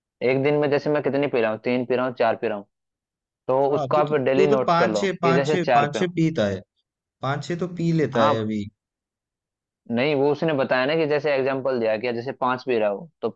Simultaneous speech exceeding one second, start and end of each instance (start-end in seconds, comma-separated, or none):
3.7-6.1